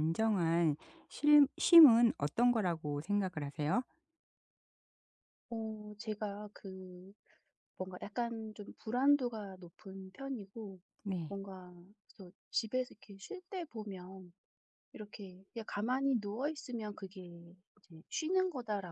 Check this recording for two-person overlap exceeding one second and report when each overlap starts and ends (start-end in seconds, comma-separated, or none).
none